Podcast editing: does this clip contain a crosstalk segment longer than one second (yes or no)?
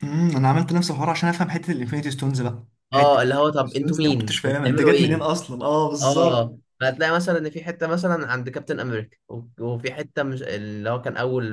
yes